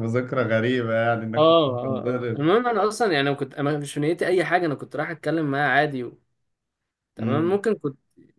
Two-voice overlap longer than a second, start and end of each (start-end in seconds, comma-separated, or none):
1.3-2.5